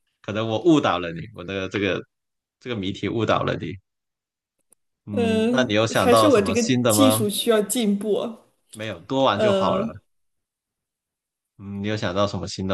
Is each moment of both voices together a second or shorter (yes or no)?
no